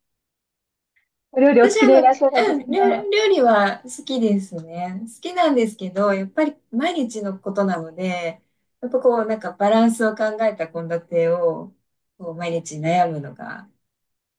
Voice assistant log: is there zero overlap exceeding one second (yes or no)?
no